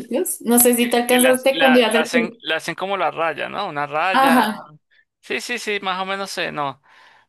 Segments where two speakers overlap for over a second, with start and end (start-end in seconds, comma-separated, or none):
0.8-2.4